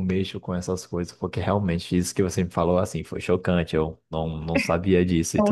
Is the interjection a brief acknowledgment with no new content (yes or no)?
yes